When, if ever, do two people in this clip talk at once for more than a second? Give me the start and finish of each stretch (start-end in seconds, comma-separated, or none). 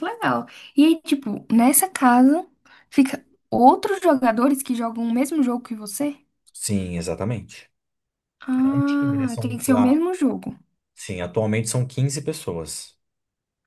8.6-9.9